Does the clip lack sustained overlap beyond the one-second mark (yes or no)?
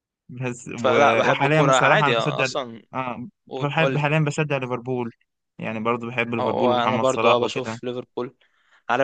no